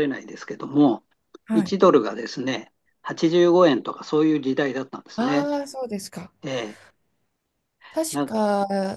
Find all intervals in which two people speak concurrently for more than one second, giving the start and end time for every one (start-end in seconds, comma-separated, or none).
none